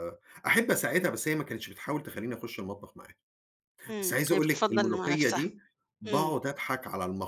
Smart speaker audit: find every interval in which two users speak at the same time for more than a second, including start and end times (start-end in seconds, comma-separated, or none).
4.0-5.4